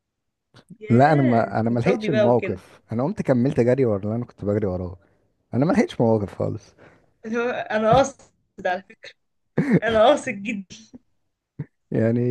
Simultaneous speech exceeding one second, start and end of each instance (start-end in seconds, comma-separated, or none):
0.9-2.6